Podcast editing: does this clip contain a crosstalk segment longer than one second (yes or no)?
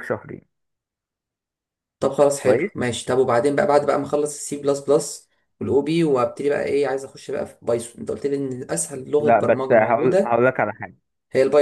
yes